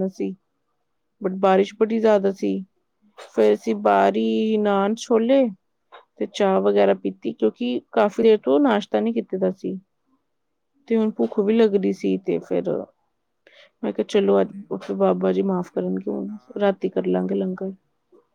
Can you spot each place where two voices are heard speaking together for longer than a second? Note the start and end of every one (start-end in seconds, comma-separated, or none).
15.6-17.7